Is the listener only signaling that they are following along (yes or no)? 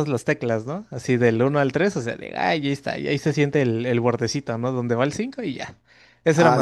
no